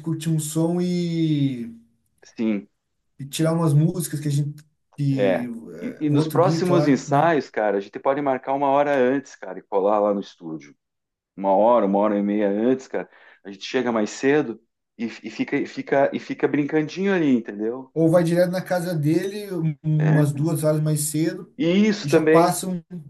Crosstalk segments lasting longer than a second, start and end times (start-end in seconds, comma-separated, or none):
5.1-7.3